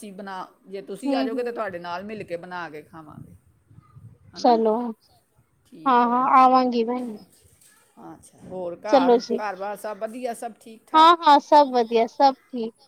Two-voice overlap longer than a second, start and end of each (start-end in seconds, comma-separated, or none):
none